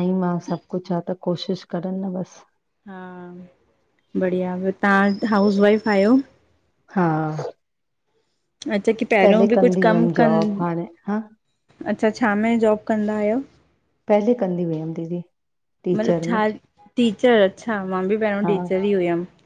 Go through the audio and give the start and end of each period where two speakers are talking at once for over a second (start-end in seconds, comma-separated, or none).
9.2-10.7